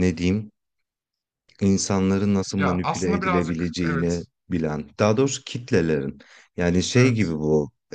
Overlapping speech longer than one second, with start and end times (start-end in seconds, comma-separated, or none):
2.6-4.3